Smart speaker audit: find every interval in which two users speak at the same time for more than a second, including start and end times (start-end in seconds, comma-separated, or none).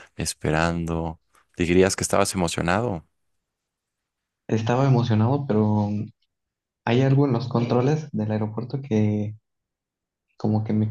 none